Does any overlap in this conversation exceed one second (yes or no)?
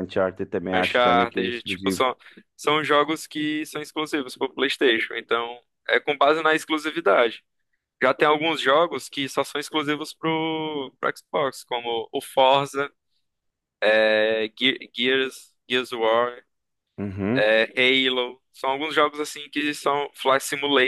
yes